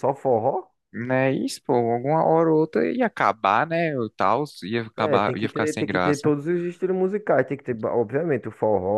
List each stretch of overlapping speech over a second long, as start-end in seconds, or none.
5.0-6.3